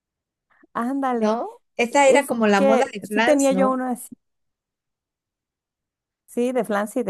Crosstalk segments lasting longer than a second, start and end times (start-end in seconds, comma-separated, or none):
2.1-3.8